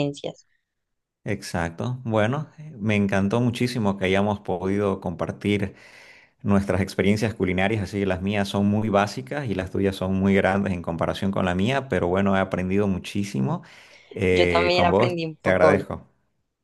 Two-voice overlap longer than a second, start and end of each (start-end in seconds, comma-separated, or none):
14.3-15.8